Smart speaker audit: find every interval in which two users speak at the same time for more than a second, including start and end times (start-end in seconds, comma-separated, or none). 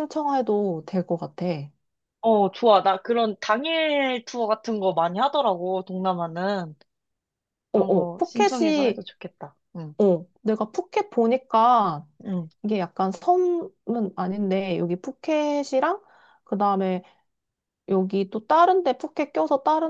7.7-9.0